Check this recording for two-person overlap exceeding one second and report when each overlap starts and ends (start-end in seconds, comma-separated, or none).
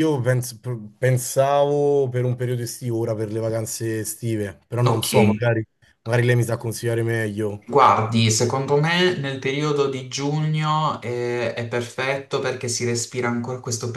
none